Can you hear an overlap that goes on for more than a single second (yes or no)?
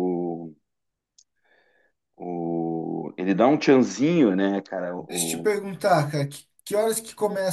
no